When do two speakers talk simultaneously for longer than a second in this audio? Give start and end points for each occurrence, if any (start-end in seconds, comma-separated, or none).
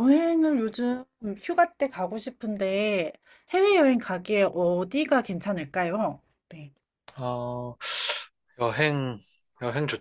none